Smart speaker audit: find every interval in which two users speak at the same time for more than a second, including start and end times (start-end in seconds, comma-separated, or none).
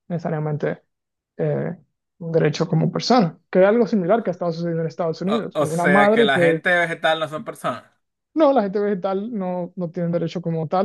5.3-6.6